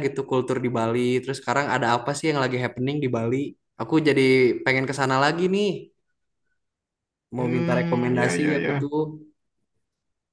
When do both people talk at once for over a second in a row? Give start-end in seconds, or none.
7.3-8.9